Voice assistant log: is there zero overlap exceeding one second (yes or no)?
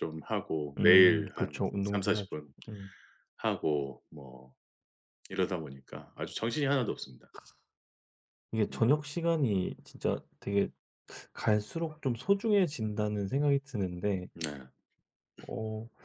no